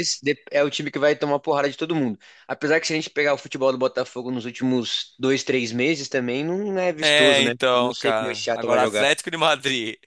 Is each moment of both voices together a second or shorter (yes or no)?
no